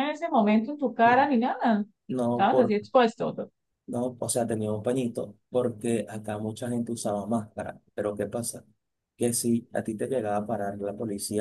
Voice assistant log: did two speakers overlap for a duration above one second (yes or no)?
no